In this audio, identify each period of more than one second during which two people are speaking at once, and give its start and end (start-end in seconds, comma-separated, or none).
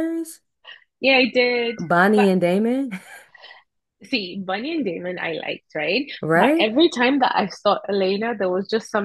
none